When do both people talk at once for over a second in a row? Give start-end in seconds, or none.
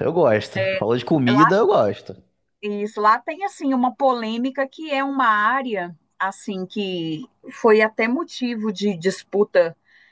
none